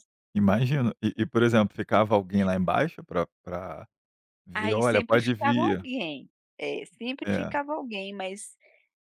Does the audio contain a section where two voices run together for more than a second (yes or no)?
yes